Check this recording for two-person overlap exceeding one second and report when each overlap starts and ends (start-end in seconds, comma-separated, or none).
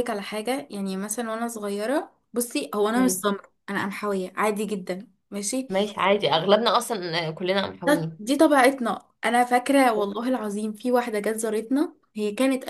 none